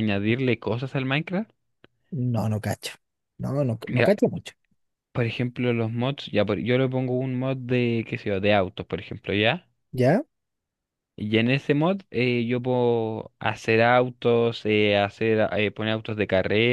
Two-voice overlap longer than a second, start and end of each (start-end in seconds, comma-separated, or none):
none